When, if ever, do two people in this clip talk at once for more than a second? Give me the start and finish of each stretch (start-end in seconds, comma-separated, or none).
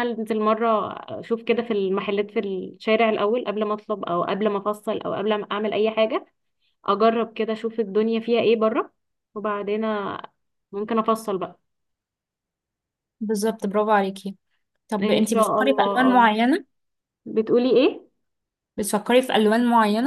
15.0-16.3